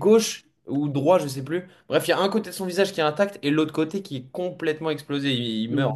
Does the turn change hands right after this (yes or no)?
yes